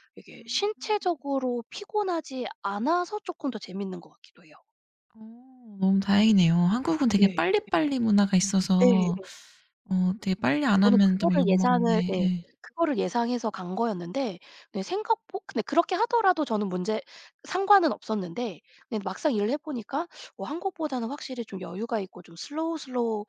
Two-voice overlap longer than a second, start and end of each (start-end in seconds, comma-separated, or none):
10.8-12.4